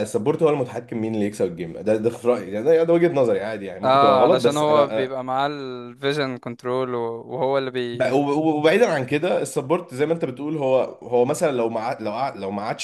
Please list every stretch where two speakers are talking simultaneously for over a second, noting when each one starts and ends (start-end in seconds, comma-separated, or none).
3.8-5.2